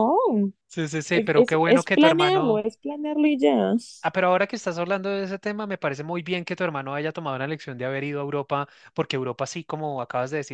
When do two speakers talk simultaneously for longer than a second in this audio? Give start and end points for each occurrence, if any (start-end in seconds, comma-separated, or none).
1.1-2.6